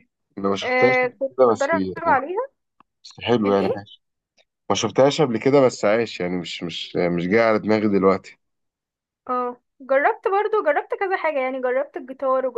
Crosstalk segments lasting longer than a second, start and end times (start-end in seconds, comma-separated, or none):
0.6-2.2